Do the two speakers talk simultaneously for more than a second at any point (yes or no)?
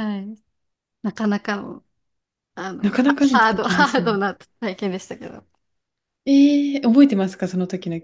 yes